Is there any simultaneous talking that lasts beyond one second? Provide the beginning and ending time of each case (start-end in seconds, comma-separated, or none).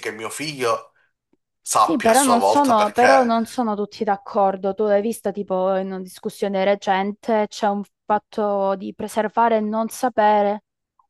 1.8-3.4